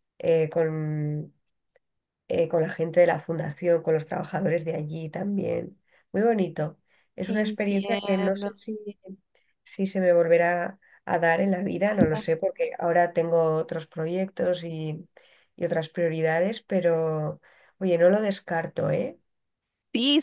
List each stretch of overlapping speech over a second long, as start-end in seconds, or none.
7.3-8.5